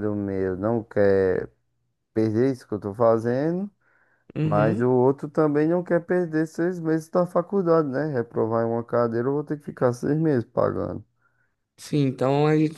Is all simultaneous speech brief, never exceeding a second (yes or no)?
yes